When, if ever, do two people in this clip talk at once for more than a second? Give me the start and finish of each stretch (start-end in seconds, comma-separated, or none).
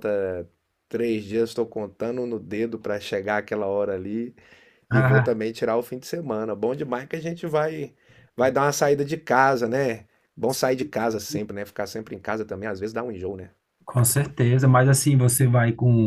none